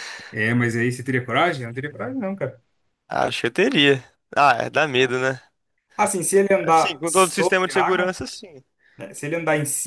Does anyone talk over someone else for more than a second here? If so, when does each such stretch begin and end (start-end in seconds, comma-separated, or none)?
6.7-8.1